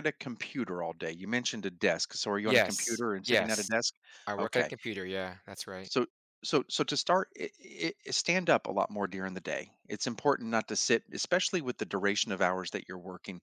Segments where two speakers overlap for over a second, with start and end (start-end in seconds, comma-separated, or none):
2.4-3.7